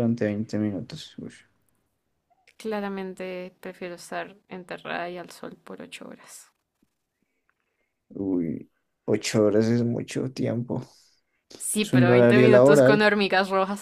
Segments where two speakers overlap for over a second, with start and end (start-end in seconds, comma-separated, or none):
11.8-13.1